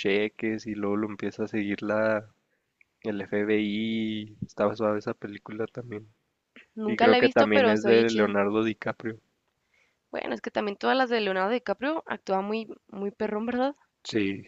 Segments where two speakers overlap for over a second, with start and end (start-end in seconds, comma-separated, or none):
6.9-8.3